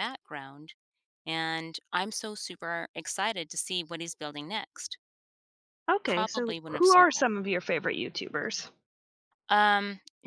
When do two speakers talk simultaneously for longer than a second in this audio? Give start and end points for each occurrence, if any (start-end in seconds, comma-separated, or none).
6.1-7.3